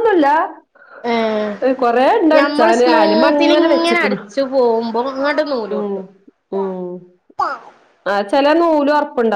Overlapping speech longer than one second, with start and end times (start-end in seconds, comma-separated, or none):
2.4-4.2